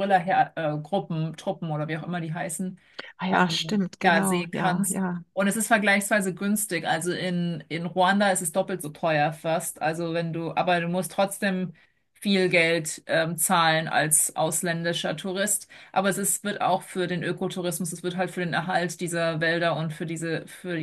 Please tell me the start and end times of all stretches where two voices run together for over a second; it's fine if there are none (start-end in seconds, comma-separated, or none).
3.3-5.2